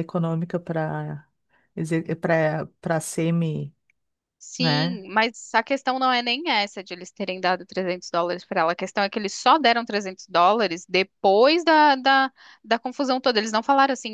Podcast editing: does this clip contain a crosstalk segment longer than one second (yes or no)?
no